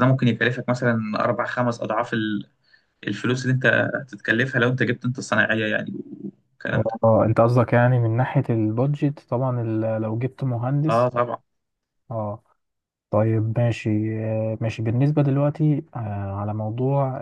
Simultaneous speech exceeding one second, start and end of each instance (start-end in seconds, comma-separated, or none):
none